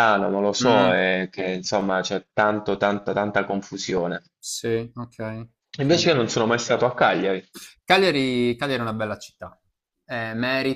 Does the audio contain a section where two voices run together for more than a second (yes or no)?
no